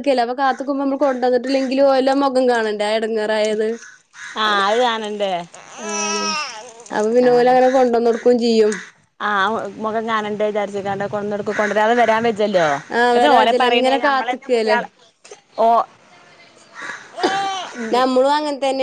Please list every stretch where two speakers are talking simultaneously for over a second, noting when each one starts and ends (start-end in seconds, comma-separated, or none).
13.2-14.8